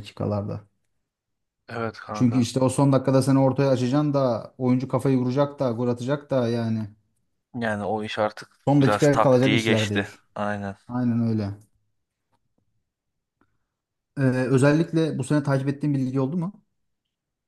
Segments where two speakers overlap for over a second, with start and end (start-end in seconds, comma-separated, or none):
8.7-10.2